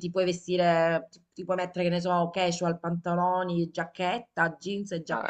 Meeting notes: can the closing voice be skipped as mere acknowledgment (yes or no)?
no